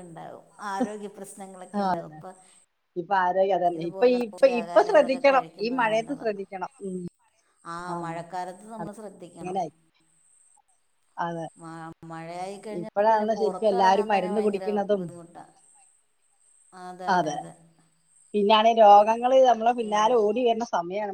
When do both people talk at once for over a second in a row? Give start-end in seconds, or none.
3.8-6.4, 12.8-15.0